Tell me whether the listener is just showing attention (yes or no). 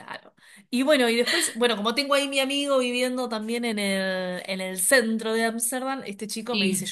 yes